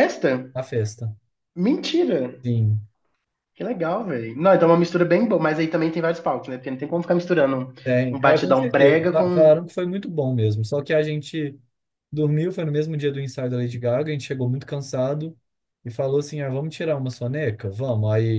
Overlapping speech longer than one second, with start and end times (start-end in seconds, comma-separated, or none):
8.1-9.5